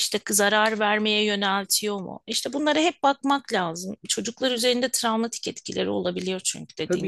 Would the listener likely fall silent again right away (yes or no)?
no